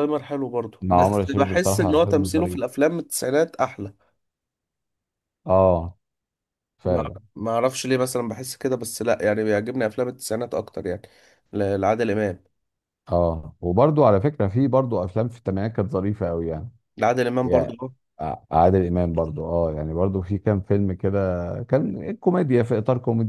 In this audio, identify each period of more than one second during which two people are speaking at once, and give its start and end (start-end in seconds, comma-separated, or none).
0.8-2.6